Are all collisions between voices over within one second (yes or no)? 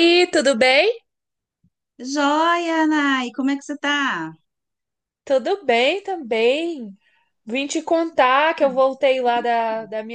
yes